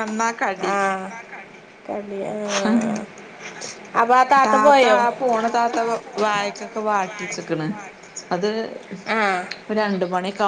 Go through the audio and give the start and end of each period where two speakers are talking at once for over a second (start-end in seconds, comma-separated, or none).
none